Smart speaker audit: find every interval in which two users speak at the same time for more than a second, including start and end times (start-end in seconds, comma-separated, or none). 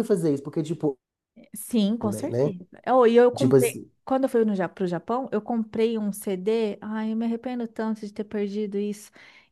none